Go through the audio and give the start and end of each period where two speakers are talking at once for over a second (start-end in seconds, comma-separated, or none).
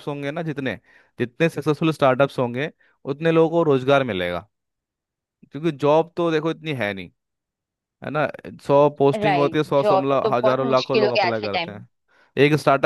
9.2-11.8